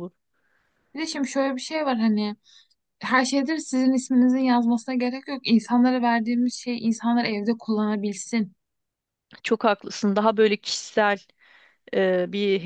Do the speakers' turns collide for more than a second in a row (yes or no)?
no